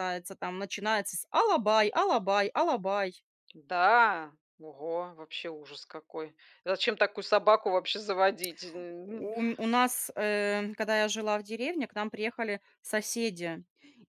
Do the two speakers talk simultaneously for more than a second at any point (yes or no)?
no